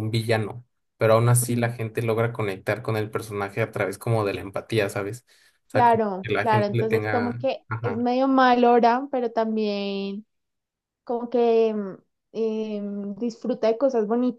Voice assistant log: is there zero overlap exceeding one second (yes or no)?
no